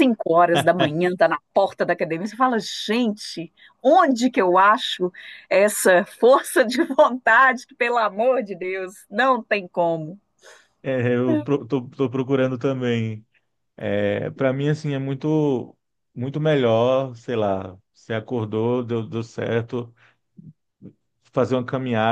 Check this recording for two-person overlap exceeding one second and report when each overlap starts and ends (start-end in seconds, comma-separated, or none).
none